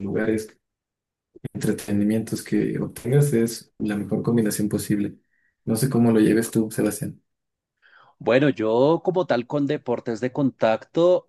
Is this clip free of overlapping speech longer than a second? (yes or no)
yes